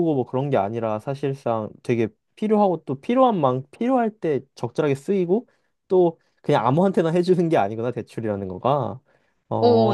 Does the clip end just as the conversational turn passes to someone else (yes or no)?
yes